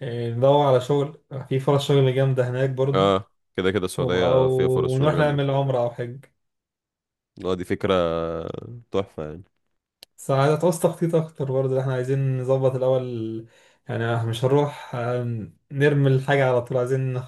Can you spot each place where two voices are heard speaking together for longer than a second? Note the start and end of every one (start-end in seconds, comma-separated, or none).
4.0-5.4